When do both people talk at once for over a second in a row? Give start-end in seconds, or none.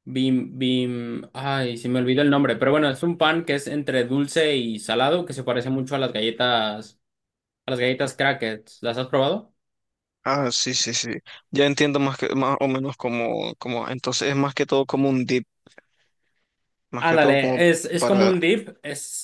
17.0-18.3